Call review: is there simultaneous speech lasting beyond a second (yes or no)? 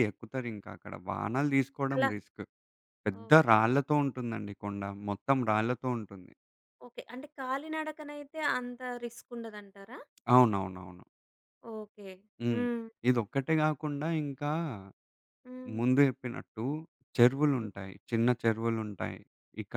no